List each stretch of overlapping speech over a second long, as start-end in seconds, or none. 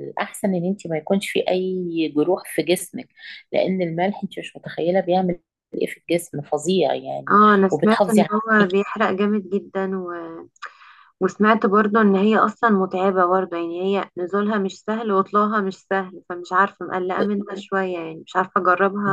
7.3-8.8